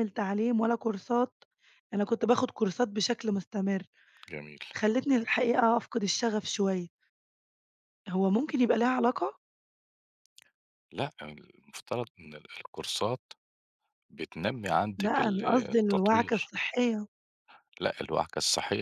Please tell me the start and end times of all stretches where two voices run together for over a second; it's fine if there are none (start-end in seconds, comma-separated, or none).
15.0-16.5